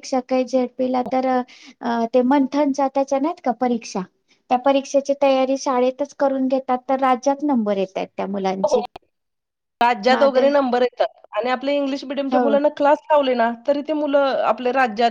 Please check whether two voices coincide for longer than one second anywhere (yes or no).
no